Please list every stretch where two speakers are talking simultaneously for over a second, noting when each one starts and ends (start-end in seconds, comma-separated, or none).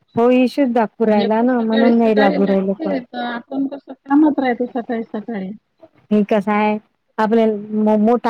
1.2-2.9